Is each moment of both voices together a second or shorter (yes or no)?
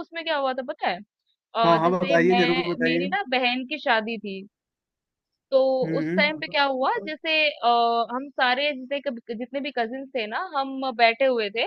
no